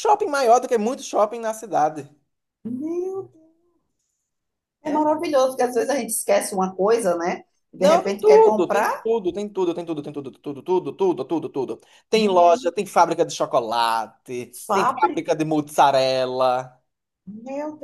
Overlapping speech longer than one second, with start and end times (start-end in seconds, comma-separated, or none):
7.8-9.1